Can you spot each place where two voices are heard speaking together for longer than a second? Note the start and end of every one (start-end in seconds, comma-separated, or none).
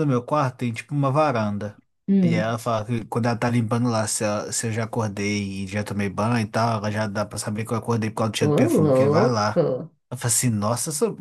8.4-9.7